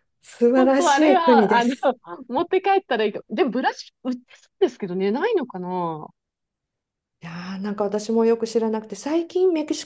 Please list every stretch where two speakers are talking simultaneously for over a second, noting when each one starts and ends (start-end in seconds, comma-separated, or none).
0.5-1.7